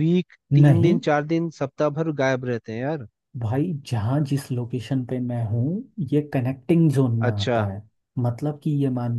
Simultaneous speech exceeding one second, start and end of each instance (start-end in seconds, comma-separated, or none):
none